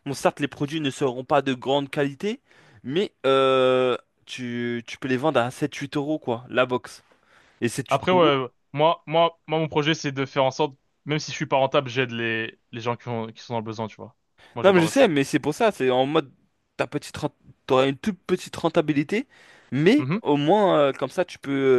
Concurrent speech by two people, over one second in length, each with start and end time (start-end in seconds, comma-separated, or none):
none